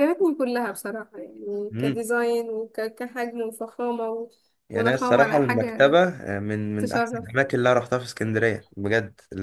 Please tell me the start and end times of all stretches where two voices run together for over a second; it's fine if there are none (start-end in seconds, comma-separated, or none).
4.7-6.0